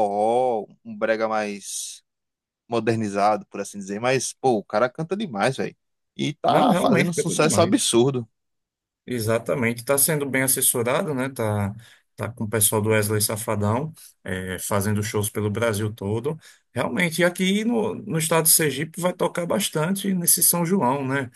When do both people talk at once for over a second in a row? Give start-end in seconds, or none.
6.5-7.8